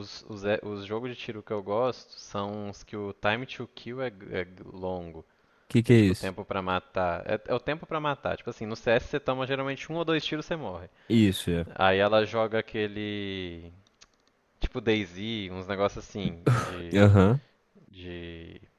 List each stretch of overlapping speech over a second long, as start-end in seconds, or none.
none